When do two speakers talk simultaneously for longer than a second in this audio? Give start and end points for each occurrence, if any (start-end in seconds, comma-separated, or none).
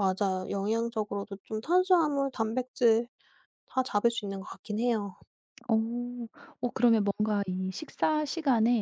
none